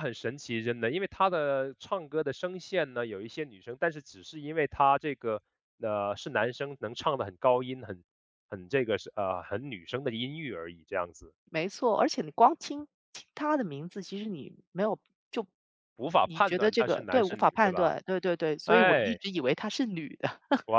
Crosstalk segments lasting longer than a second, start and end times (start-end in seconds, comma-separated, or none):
16.2-17.9